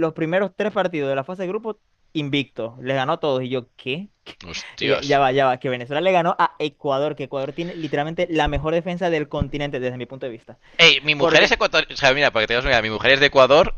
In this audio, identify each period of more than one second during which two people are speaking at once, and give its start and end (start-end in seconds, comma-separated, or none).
none